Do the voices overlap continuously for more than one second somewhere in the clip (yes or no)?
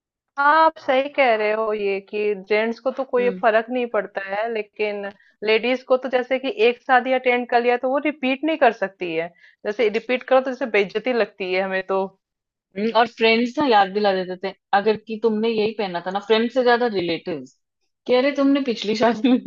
no